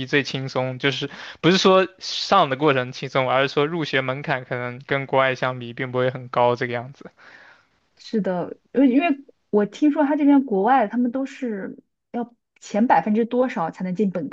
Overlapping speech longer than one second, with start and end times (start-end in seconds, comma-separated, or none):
none